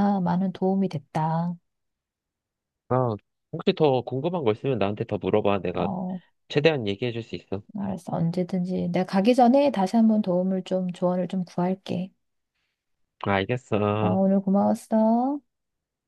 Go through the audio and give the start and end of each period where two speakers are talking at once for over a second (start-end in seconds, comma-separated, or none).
none